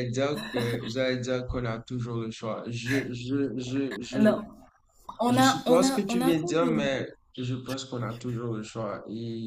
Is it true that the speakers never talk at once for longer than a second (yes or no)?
no